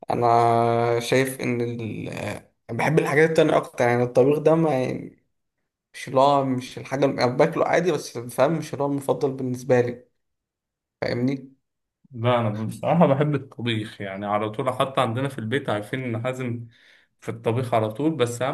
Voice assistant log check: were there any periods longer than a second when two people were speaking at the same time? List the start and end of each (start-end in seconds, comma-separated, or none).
none